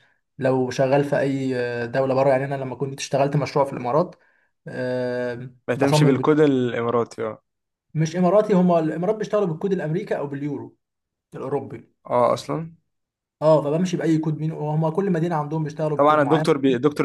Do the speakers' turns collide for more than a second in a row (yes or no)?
no